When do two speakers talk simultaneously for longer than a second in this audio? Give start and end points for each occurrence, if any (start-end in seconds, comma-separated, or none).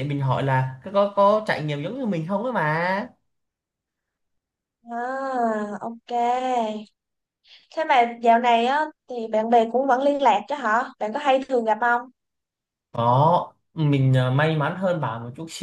none